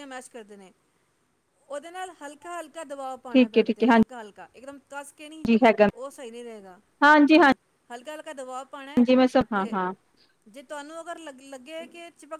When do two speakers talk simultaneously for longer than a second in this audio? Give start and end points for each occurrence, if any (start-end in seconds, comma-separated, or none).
none